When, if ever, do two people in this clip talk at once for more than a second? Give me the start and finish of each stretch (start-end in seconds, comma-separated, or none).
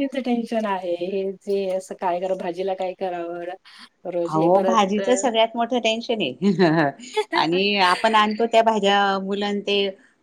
none